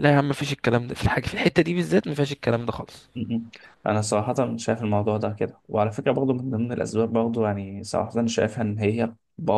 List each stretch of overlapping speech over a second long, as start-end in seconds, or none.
none